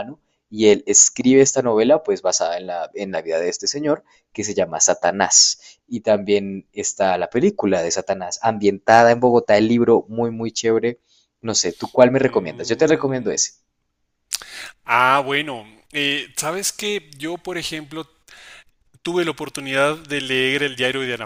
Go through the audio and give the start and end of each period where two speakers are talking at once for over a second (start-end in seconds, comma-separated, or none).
12.1-13.4